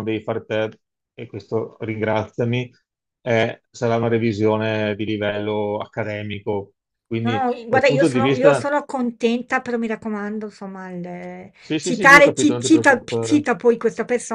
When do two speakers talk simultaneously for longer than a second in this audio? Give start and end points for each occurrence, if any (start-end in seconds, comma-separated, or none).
7.2-8.7, 11.6-13.4